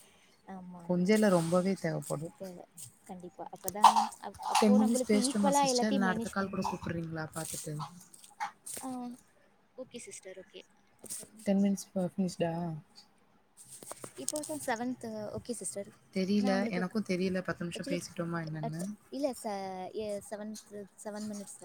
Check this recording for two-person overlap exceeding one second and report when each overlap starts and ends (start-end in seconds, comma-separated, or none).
4.6-6.8